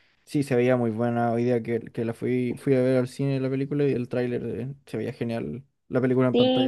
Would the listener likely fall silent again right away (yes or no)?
no